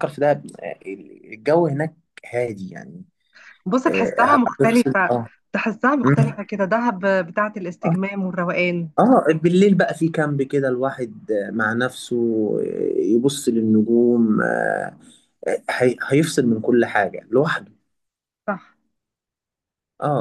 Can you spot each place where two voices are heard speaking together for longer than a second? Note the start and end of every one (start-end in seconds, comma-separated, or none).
3.9-5.1